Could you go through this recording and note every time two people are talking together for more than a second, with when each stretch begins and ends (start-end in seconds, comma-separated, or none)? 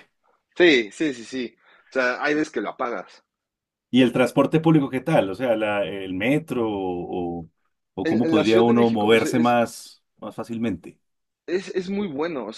8.0-9.6